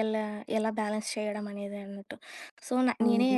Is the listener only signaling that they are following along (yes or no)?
yes